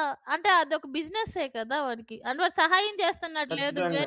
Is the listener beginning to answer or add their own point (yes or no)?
no